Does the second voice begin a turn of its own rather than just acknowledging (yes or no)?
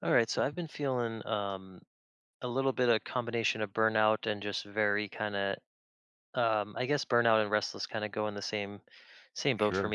no